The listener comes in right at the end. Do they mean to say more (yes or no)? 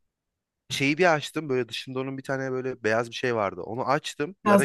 no